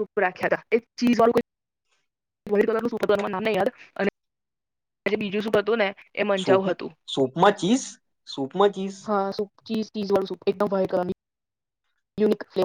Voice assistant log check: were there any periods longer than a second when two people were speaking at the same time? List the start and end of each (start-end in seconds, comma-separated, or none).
none